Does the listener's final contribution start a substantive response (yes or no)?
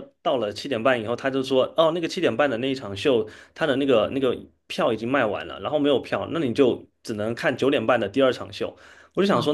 no